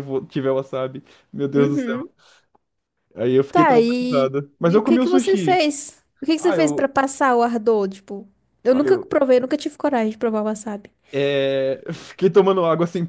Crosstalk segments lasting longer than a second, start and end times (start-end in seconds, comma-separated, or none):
3.5-5.6